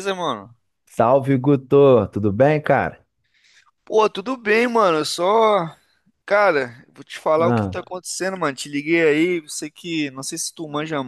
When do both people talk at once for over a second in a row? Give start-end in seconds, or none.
none